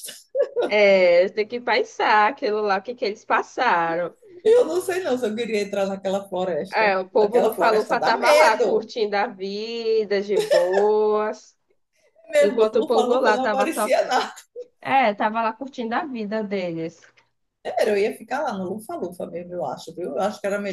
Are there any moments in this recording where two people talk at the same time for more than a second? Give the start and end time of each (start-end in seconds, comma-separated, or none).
6.7-8.9, 12.4-13.9